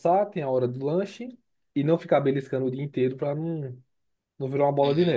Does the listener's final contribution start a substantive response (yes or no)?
yes